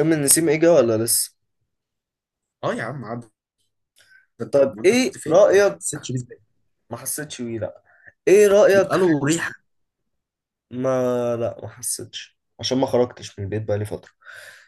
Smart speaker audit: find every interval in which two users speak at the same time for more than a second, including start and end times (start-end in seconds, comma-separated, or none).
4.5-5.8